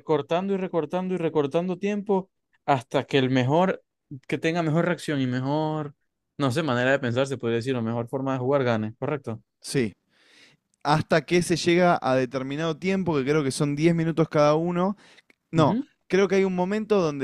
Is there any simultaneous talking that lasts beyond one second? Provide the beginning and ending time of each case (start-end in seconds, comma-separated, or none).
none